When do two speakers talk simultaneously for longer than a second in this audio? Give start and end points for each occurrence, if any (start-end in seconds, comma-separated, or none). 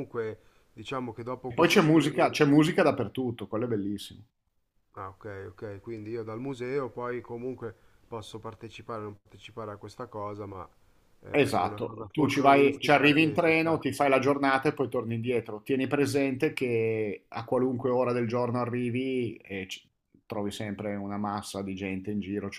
11.3-13.8